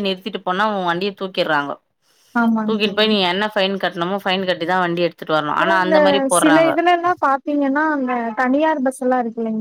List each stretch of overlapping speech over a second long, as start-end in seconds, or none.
none